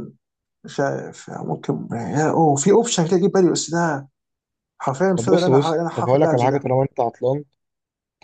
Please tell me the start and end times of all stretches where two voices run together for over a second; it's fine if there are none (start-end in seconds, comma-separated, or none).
5.2-6.7